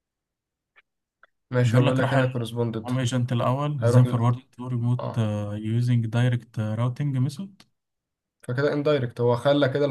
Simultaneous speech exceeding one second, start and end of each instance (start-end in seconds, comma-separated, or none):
1.6-2.9